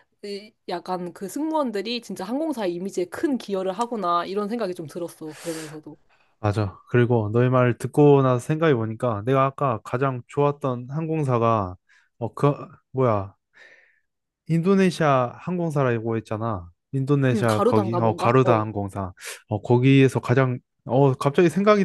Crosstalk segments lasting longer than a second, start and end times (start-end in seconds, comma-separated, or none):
17.3-18.6